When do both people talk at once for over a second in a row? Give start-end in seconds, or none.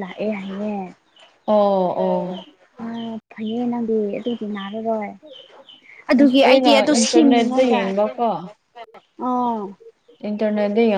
6.2-7.8